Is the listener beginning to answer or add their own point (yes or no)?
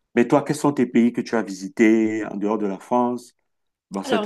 yes